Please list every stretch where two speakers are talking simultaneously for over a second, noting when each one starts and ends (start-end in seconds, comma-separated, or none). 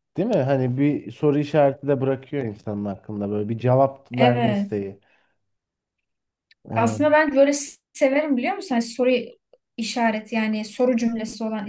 none